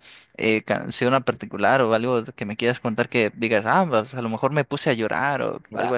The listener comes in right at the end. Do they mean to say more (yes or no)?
yes